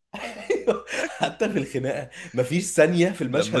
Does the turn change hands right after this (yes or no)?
yes